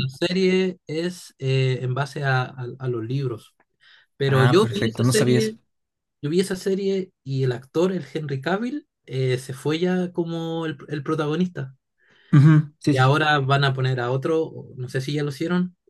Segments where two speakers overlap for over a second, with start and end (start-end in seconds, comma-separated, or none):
4.2-5.5